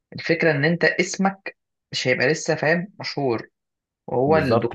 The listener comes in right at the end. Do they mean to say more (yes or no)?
yes